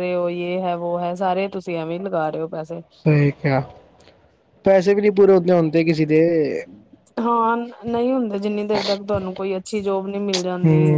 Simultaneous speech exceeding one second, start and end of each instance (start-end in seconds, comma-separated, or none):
none